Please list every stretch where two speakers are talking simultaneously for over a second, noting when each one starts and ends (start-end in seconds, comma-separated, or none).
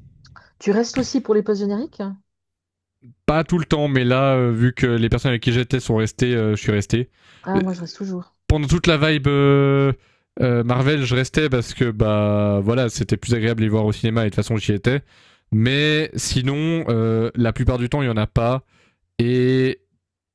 none